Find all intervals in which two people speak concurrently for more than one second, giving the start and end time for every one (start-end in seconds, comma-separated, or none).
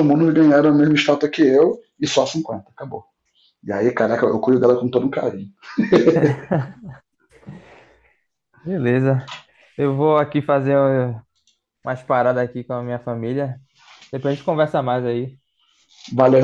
none